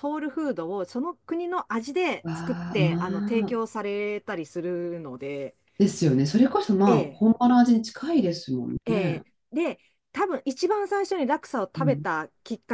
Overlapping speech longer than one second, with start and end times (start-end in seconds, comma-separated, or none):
2.2-3.6